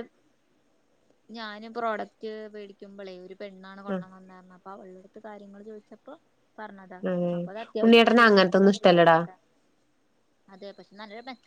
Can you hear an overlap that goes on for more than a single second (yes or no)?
yes